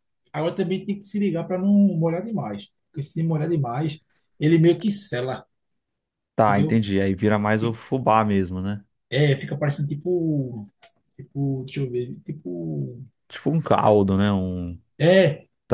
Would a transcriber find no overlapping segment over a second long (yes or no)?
yes